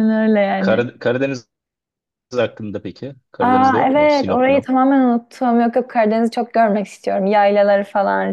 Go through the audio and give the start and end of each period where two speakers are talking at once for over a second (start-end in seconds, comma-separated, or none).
3.4-4.7